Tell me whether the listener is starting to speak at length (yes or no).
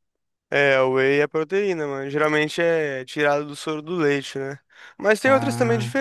no